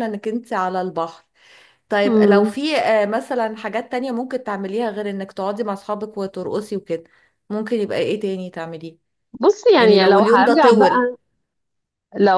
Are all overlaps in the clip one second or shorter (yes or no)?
no